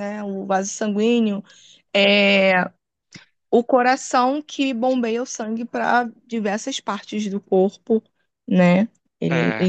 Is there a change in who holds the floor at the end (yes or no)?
no